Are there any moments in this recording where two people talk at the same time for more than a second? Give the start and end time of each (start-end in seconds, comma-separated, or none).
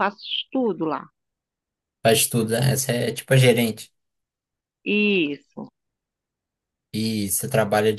none